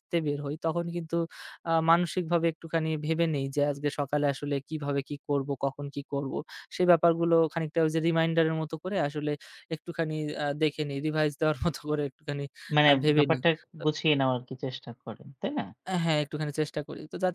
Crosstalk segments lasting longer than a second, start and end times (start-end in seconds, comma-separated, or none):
none